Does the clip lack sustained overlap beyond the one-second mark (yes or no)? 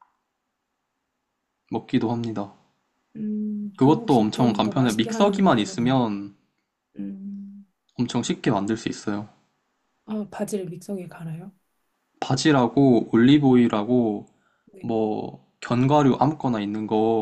no